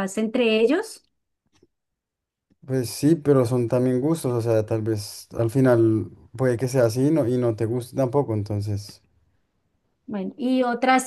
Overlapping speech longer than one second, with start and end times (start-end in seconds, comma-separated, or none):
none